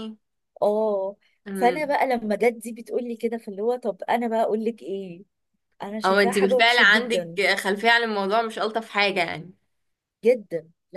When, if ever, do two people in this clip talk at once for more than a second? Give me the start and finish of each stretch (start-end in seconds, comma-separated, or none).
6.0-7.4